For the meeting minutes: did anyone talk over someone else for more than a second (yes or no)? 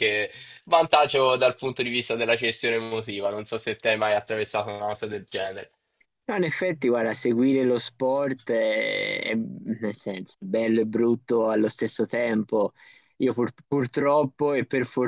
no